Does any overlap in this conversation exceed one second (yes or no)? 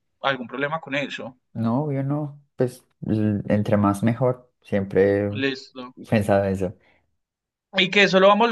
no